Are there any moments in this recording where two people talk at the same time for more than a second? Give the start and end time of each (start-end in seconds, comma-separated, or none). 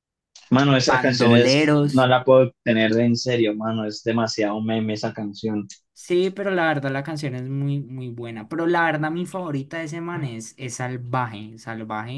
0.9-2.1